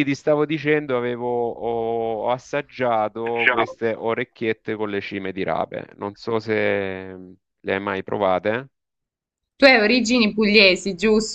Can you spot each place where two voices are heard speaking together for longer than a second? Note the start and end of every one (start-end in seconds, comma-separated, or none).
none